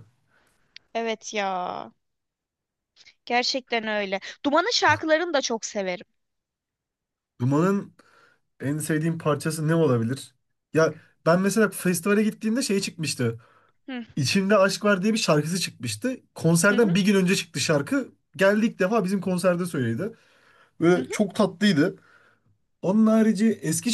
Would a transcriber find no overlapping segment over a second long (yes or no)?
yes